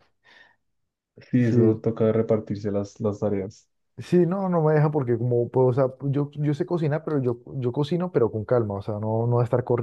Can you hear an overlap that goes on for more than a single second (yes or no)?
no